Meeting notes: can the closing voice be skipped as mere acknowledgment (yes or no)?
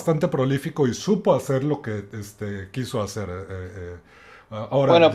no